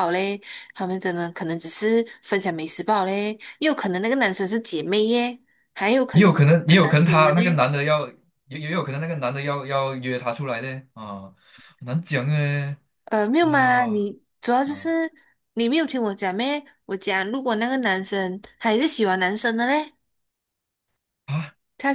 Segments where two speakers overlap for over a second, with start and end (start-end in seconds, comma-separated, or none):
6.1-7.6